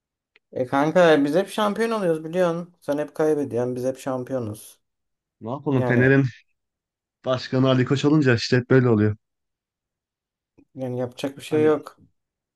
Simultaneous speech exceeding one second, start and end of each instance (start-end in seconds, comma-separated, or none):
none